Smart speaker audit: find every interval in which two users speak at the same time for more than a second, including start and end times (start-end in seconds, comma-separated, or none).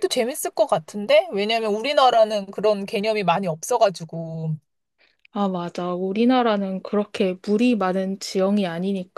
none